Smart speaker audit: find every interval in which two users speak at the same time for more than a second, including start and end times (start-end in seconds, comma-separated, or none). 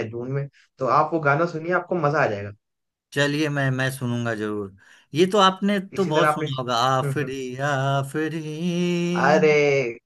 6.0-7.3